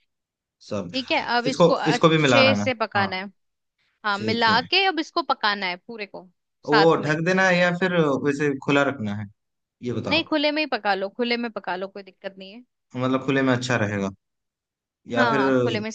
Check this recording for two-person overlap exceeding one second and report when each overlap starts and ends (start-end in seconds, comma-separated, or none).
1.5-3.1